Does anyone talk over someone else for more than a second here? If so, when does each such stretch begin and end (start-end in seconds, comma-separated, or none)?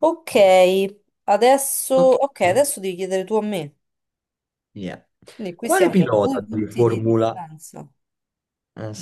5.6-7.3